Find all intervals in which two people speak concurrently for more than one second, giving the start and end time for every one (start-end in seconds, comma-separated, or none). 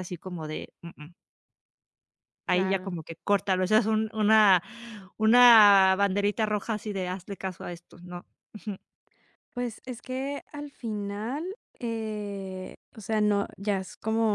none